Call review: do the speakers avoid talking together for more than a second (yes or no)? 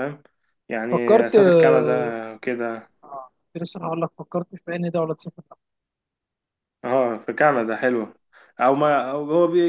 no